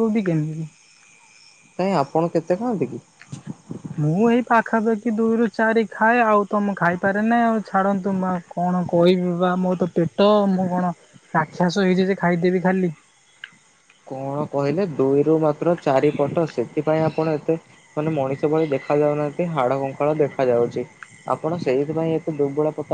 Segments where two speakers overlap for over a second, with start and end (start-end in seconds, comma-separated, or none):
none